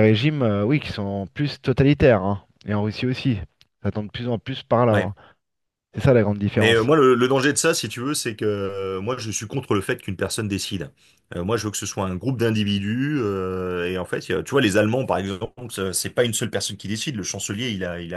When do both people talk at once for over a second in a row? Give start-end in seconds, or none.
none